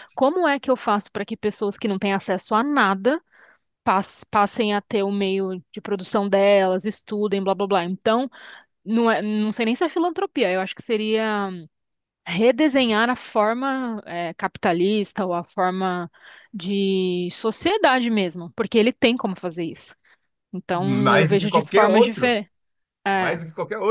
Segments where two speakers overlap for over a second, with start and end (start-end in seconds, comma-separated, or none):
20.7-22.4